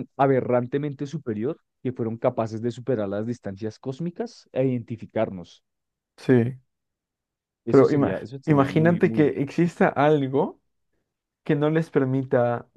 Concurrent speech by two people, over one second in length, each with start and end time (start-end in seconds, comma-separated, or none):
7.7-9.3